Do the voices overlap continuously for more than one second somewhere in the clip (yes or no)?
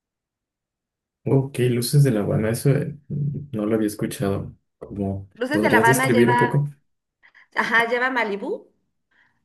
yes